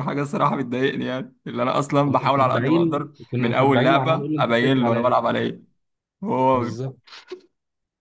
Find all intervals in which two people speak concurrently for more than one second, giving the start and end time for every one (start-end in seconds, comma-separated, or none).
2.0-5.2